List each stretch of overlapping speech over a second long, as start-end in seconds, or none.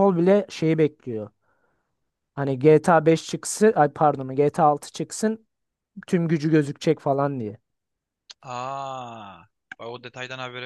none